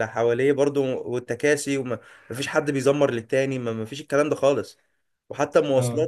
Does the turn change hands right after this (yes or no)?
no